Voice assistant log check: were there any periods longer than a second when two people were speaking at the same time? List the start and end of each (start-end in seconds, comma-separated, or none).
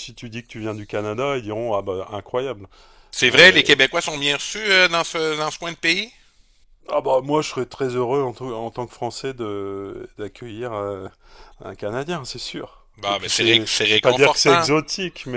13.0-14.7